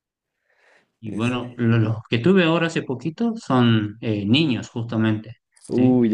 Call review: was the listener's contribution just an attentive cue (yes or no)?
yes